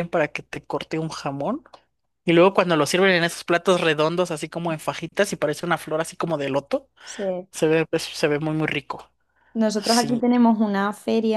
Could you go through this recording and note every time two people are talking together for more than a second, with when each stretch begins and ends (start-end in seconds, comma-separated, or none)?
none